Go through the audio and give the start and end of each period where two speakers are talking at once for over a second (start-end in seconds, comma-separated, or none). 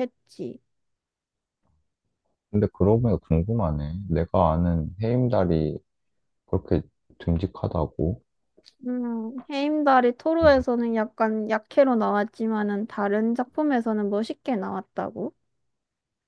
none